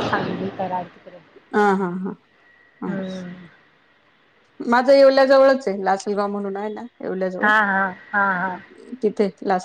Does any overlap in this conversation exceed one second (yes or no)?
no